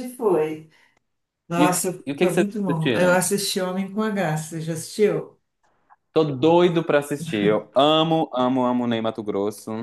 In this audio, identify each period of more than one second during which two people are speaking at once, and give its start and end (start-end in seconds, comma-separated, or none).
1.6-3.2